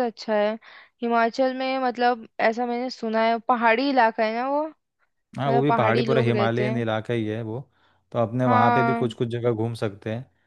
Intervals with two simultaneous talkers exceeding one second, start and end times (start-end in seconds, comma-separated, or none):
5.4-6.8